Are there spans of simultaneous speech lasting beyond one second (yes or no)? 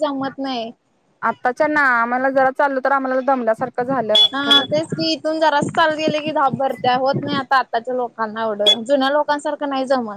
no